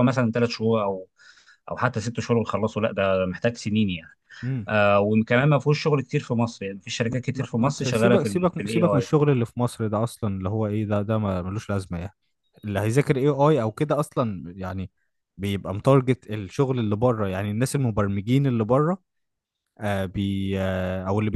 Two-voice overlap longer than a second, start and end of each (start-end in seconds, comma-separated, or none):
7.1-9.1